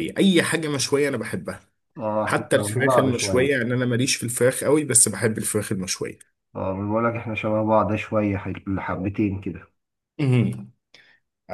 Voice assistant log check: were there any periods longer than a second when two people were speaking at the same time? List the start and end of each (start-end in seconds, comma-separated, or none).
2.2-3.5